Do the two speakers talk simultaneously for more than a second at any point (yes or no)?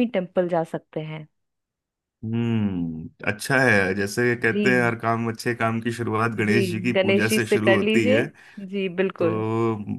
yes